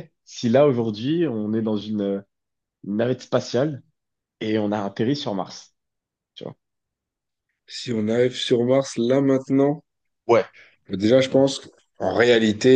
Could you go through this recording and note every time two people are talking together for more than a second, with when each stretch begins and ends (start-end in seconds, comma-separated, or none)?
none